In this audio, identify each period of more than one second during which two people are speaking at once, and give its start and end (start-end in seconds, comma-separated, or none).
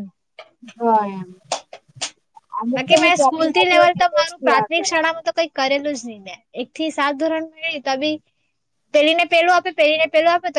2.7-5.0